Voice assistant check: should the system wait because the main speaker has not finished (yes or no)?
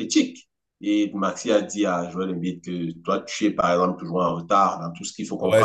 no